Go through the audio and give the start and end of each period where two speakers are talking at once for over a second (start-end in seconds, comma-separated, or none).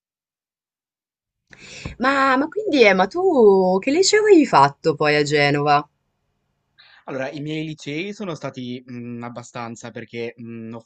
none